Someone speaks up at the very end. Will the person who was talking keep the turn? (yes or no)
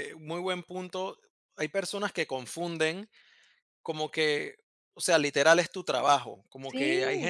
yes